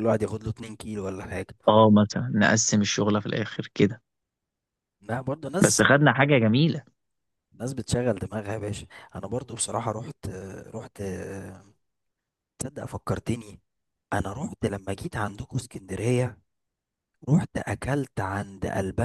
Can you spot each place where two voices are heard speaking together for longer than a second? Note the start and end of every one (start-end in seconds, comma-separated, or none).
none